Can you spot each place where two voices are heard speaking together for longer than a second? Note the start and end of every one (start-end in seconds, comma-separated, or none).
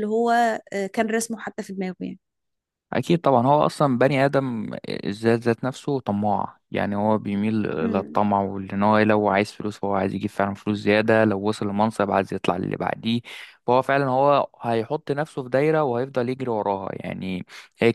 none